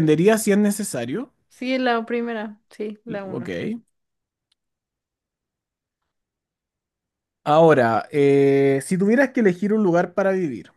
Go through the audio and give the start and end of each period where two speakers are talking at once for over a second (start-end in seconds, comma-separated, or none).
none